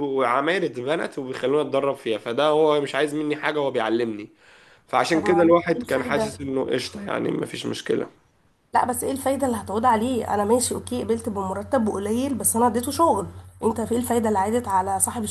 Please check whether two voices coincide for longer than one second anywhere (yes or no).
yes